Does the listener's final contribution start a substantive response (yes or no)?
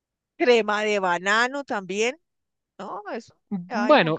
yes